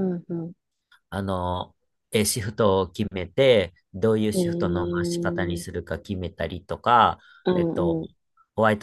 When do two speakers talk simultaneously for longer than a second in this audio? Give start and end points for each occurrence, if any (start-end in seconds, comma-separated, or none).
4.3-5.6